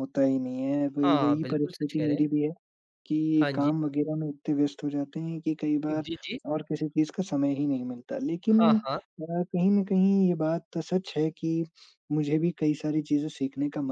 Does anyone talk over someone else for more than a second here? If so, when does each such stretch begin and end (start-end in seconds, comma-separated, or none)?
1.0-2.3